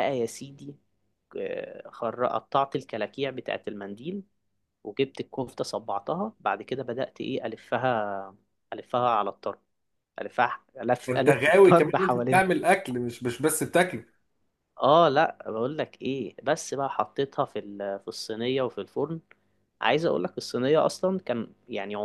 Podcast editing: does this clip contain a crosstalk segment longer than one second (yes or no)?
yes